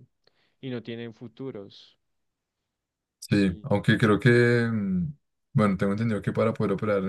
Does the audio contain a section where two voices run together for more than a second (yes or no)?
no